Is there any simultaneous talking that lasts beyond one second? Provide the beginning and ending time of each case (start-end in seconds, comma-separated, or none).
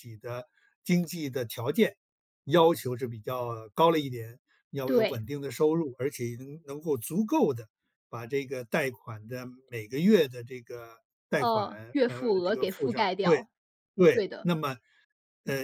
11.4-13.5